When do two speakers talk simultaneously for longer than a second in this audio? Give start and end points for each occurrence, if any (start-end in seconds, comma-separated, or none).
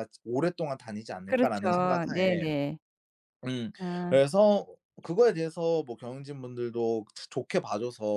1.2-2.5